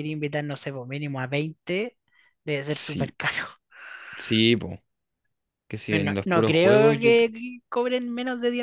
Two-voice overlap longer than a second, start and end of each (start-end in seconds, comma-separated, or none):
5.9-7.3